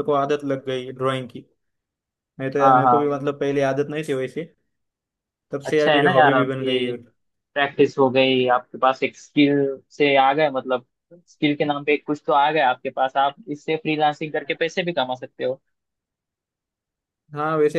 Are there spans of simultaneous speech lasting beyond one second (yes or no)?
yes